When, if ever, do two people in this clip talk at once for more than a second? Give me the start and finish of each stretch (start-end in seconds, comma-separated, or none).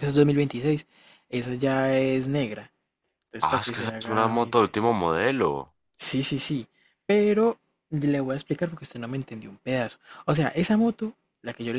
3.5-4.7